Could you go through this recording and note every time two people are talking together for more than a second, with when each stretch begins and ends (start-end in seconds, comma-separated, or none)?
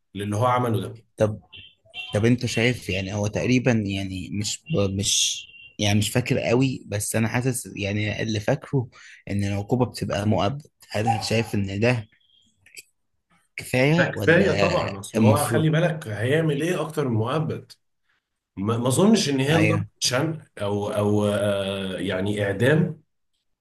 13.9-15.7